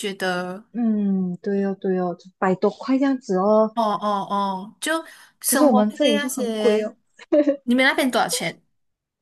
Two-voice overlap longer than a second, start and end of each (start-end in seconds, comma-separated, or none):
5.4-6.9